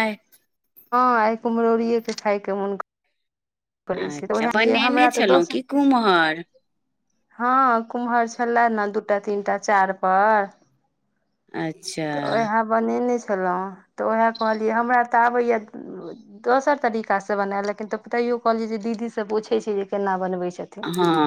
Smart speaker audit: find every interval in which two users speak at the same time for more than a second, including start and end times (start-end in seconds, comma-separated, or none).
4.0-5.6